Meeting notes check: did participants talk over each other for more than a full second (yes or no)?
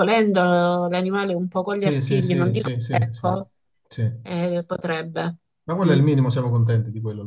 yes